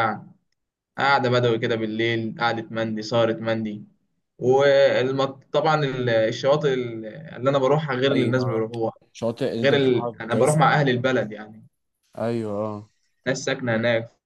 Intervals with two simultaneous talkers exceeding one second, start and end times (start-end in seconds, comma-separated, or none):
9.6-11.0